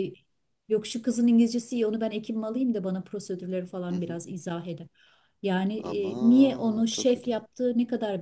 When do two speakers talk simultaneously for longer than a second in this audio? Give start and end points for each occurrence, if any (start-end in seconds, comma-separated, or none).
5.8-7.4